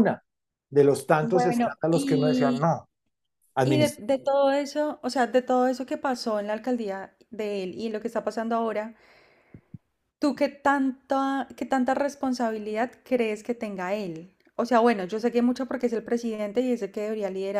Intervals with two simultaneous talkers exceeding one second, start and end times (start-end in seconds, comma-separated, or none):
1.2-2.7